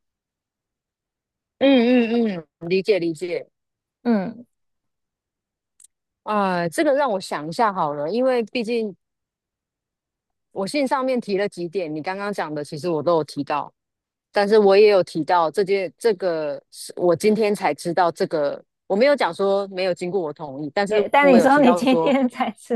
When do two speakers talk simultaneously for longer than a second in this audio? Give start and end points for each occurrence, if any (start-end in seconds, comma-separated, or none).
20.9-22.1